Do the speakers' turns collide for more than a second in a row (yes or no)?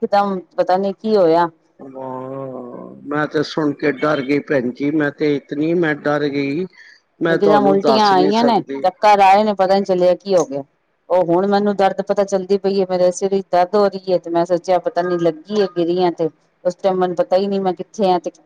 yes